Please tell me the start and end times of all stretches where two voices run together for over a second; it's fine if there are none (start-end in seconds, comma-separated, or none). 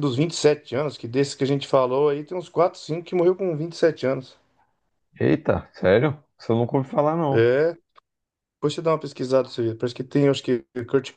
none